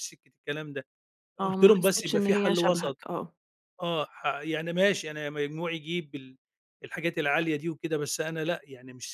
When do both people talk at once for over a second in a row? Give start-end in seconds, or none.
1.4-3.0